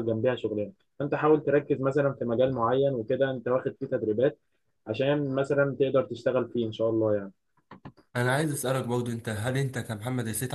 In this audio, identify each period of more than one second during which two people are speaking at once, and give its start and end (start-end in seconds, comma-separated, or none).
none